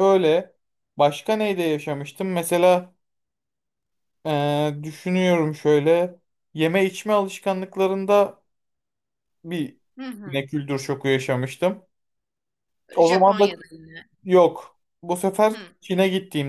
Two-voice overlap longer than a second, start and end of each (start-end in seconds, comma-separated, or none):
none